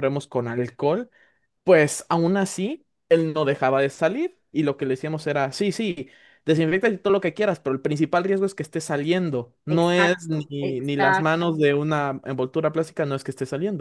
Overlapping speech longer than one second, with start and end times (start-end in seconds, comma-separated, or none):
9.8-11.3